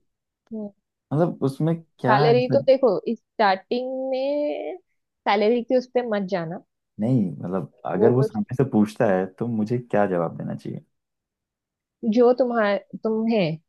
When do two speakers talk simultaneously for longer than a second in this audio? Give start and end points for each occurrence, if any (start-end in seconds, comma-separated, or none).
none